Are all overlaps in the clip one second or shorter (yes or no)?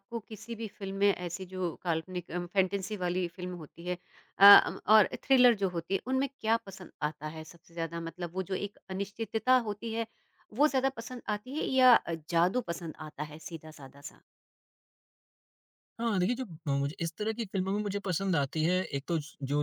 yes